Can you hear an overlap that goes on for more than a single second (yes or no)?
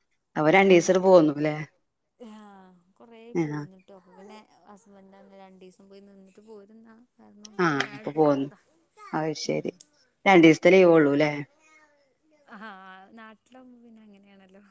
no